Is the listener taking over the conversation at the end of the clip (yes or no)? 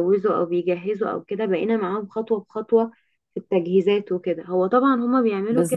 no